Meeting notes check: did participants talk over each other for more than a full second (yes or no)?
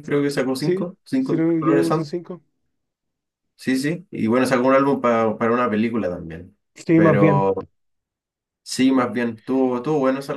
yes